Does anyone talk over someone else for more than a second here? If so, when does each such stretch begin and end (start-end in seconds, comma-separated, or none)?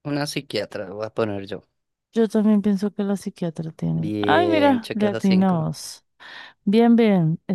3.9-5.7